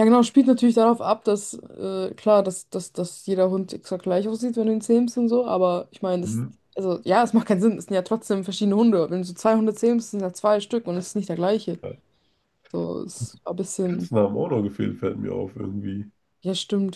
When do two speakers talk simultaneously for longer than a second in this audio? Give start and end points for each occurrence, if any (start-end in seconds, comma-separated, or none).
none